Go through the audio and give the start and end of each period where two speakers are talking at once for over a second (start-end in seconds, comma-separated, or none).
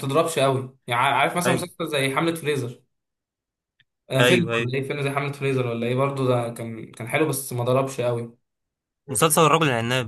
none